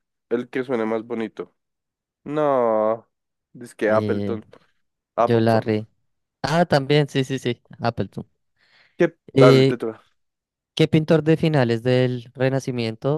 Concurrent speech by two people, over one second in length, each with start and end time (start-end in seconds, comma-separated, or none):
none